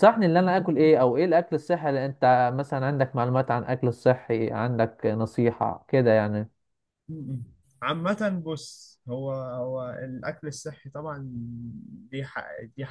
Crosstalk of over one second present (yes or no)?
no